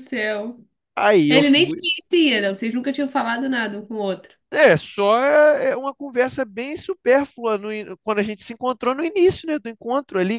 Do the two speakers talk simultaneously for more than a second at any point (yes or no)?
no